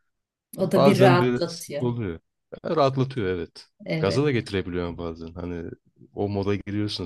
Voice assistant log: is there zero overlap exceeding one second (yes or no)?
no